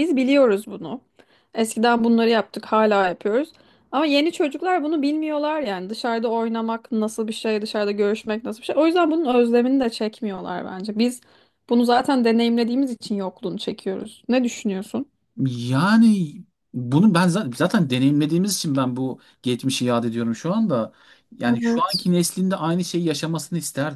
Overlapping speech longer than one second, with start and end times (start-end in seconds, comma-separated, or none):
none